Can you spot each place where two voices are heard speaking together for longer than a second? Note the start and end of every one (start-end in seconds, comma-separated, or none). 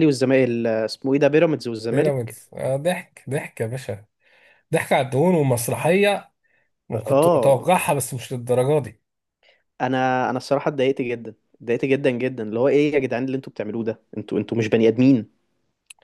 none